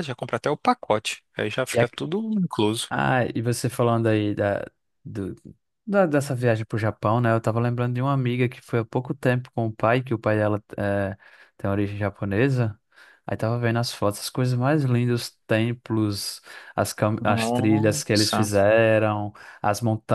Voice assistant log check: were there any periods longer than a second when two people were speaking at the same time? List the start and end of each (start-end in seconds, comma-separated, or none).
17.2-18.5